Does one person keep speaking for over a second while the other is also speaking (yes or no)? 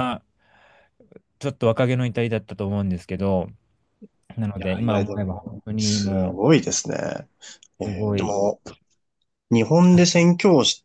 yes